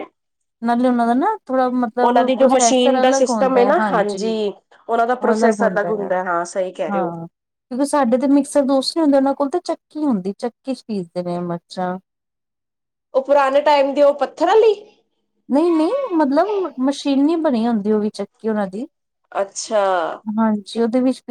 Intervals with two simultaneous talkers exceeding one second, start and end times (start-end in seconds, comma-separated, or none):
2.0-3.8